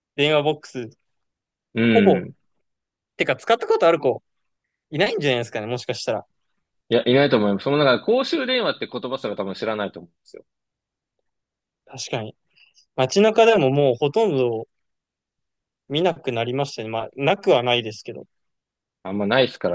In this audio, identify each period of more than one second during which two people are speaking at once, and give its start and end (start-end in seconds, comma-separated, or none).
none